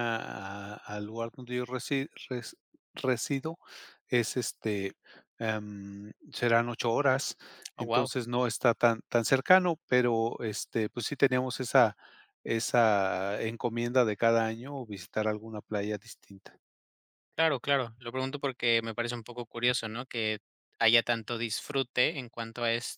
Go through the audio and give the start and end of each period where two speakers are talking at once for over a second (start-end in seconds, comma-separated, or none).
none